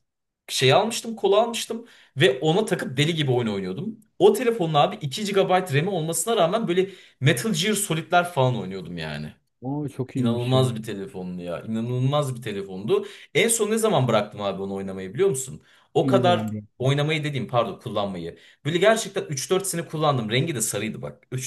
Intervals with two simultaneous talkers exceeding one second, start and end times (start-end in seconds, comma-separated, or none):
none